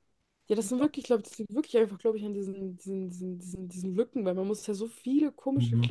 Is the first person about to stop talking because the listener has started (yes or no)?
no